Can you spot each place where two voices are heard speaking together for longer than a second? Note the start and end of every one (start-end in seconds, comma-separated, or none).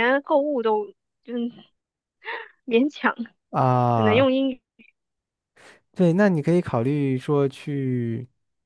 none